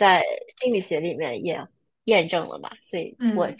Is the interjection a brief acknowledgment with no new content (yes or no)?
yes